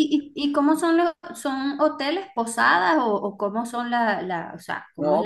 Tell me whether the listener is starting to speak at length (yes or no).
yes